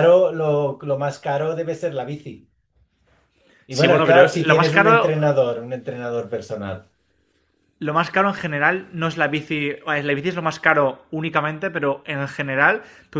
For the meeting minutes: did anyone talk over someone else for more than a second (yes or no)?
yes